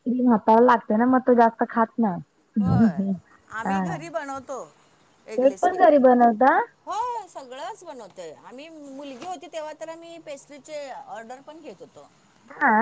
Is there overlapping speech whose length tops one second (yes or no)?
no